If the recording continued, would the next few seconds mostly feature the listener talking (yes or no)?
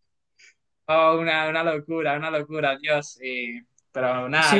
yes